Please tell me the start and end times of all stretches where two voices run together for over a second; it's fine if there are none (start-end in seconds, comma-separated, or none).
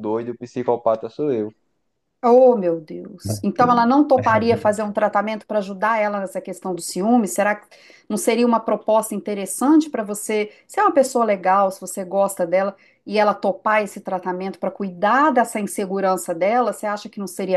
none